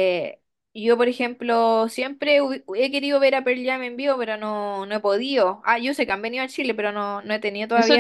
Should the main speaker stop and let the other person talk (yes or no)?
yes